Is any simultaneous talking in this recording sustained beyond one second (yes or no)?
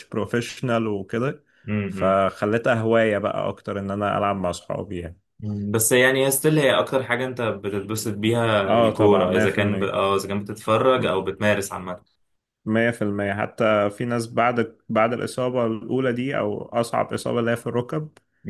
yes